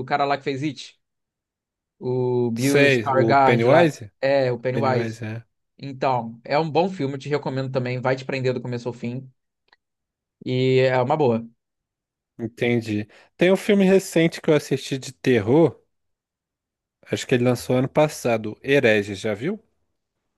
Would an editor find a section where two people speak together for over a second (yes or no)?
yes